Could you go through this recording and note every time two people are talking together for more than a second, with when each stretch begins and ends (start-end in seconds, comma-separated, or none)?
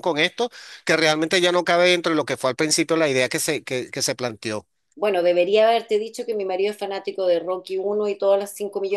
none